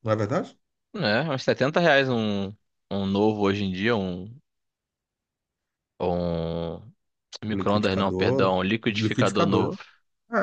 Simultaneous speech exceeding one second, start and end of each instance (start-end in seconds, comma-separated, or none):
7.5-9.8